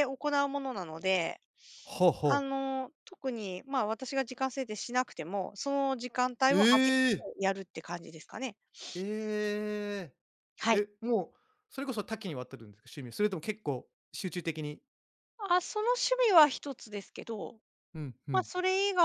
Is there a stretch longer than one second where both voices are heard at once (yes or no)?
no